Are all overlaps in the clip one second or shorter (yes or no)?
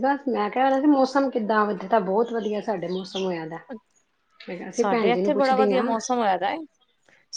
no